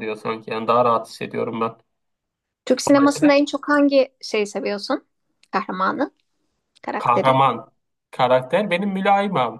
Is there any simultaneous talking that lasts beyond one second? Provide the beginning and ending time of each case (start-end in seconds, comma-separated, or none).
none